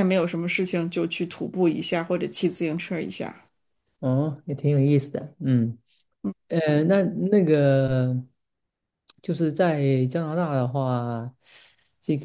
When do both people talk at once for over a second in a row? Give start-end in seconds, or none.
none